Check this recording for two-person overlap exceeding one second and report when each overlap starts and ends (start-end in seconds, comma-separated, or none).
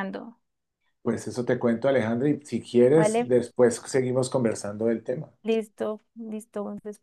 none